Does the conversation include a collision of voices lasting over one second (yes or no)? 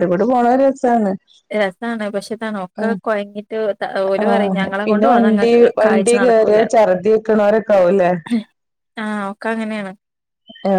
yes